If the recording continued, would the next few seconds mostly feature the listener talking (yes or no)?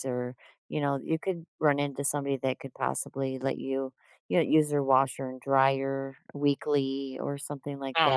yes